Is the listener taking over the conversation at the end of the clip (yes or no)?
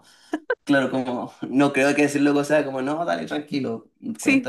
yes